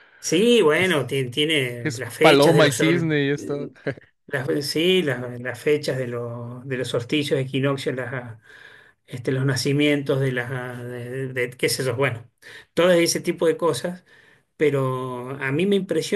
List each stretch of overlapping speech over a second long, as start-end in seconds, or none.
1.8-3.2